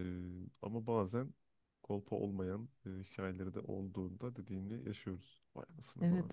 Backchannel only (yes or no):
no